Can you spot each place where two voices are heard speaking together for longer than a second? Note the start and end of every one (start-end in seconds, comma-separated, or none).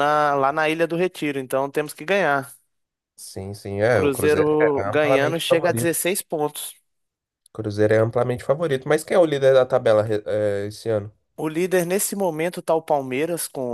3.9-6.0